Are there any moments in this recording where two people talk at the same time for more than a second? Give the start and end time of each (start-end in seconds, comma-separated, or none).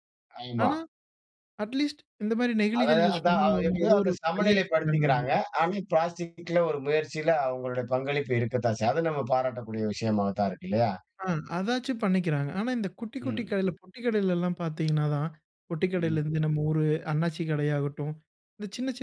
2.8-5.3